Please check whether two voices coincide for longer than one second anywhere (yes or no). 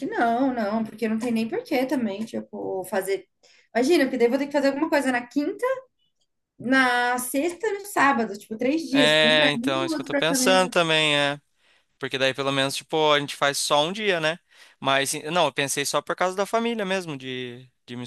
yes